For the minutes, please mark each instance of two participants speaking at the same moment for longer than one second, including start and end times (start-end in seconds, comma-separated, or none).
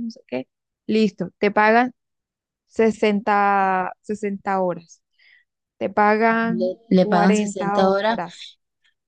6.5-8.2